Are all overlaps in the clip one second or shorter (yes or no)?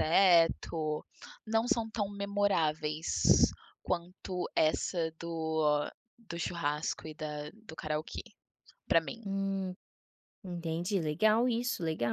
yes